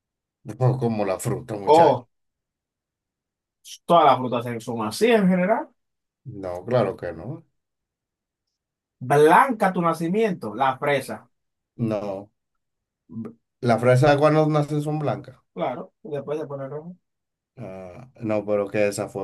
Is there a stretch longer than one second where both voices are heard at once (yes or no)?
no